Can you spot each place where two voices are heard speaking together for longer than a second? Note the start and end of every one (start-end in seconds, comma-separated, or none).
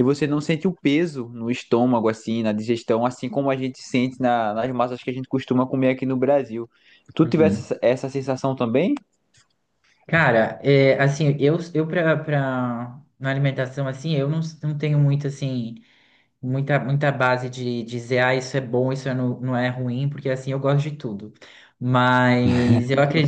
none